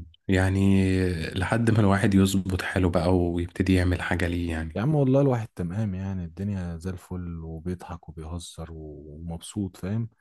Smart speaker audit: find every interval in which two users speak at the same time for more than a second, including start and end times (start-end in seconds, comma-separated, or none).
none